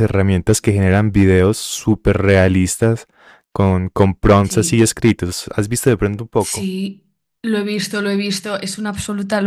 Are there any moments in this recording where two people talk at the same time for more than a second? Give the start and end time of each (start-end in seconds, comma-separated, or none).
none